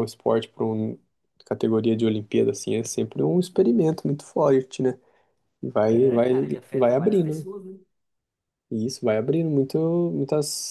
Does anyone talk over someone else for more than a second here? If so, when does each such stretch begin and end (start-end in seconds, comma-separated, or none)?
5.9-7.5